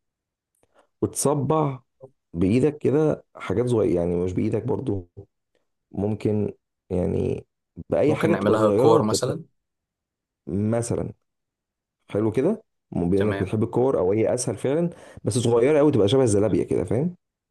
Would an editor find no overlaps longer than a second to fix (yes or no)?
no